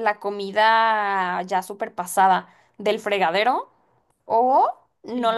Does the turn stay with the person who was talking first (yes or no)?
yes